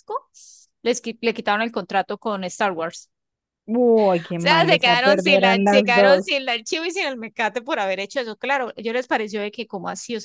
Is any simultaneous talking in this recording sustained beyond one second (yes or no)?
yes